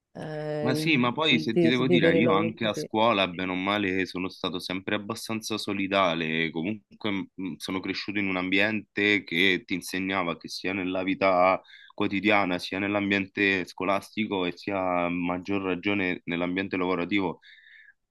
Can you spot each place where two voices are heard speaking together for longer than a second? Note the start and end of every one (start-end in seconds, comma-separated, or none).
0.6-2.9